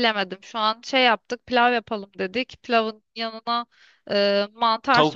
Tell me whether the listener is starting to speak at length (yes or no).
no